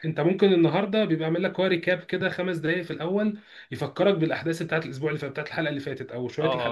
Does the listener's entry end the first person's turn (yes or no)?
no